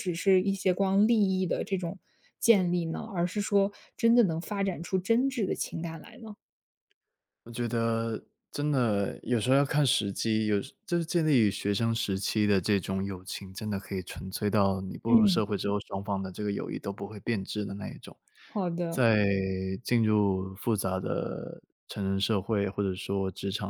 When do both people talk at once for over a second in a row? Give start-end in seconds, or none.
none